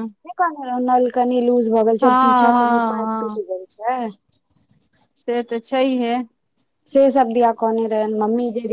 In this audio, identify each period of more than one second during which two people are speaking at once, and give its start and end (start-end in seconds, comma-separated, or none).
2.0-3.4